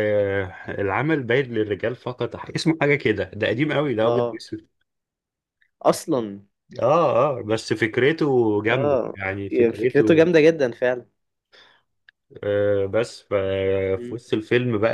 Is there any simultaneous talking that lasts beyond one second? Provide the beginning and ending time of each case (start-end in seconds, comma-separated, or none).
8.7-10.3